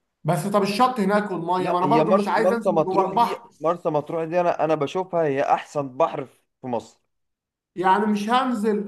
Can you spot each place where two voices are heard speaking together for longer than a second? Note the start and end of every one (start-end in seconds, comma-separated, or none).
1.6-3.5